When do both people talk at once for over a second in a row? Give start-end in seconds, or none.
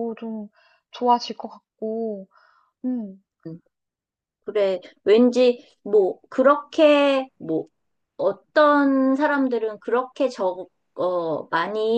none